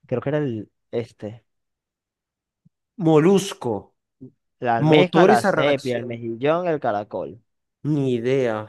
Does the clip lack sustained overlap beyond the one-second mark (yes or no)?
no